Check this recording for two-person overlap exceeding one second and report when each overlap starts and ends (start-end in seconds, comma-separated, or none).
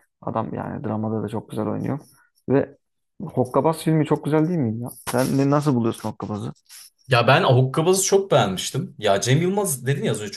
none